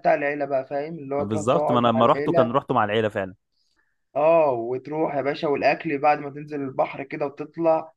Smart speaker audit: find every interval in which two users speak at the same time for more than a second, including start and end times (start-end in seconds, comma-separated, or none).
1.2-2.6